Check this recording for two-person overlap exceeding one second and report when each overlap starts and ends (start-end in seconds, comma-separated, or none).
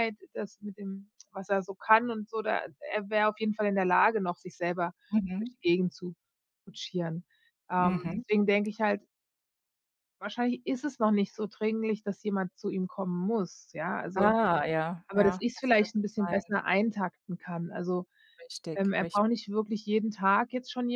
15.1-16.5